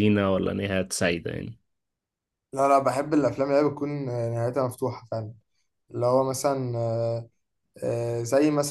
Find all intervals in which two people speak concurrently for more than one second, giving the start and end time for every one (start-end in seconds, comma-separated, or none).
none